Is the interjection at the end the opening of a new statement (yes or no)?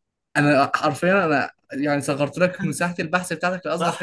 yes